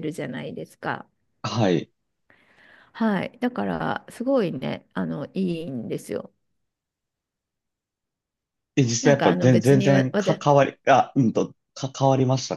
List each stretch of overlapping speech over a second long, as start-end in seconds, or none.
9.0-10.4